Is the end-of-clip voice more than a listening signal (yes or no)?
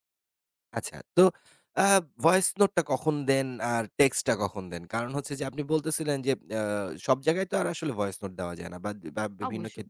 no